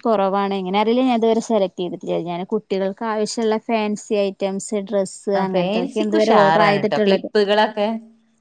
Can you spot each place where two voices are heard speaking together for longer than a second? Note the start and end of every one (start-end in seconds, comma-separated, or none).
5.4-7.3